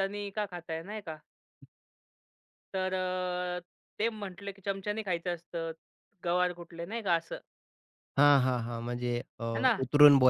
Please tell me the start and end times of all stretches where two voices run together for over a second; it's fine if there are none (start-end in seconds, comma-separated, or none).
none